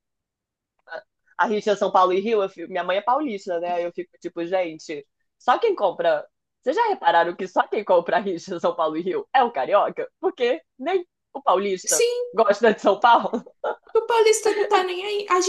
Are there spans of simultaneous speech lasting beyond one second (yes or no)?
no